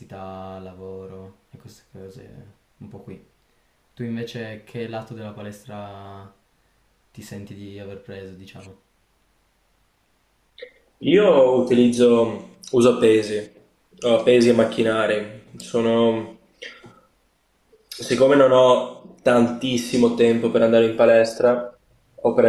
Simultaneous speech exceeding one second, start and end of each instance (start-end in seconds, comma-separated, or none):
none